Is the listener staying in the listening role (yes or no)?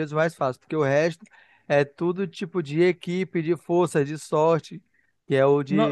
no